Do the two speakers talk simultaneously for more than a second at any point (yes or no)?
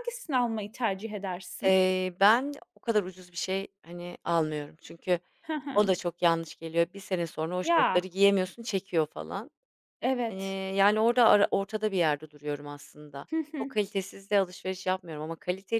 no